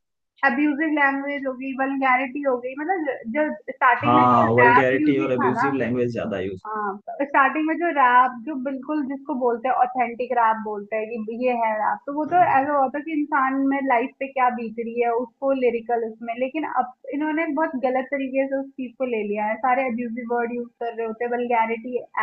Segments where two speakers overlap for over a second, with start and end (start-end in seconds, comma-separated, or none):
4.0-5.7